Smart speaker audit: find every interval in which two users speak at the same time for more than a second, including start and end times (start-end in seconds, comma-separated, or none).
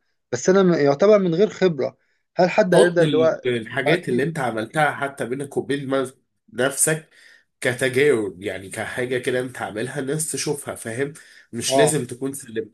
2.7-4.2